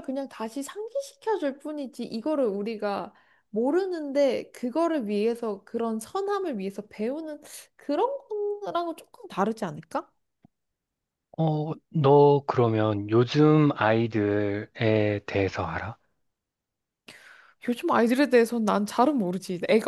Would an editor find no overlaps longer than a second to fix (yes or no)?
yes